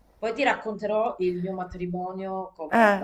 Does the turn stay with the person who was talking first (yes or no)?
no